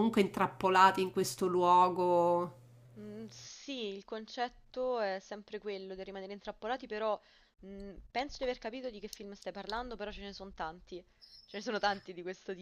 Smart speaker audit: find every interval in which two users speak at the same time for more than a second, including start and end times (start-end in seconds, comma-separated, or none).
none